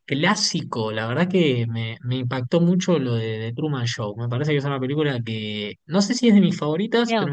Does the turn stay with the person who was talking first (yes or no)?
yes